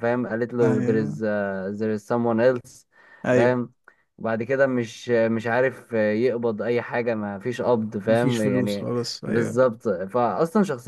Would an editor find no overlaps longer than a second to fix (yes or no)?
no